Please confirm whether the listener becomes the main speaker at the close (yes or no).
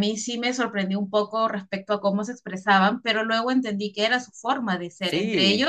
no